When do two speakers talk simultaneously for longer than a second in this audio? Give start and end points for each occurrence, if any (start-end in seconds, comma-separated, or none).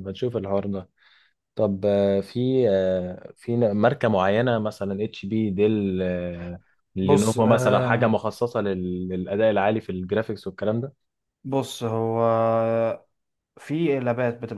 7.0-8.2